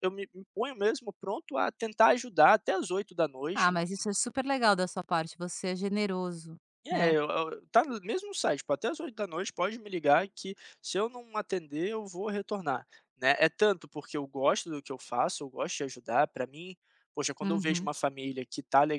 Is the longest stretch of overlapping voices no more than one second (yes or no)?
yes